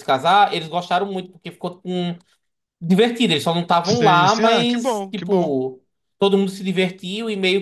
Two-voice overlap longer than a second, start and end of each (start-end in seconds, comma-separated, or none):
3.8-5.5